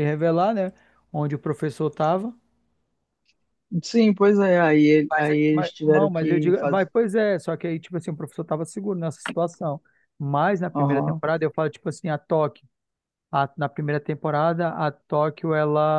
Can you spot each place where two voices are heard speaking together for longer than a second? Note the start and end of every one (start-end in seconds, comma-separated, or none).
5.1-6.9